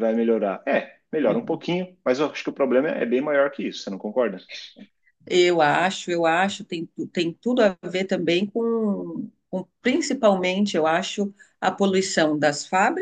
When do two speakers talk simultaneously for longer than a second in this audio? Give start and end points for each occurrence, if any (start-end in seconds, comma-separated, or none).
none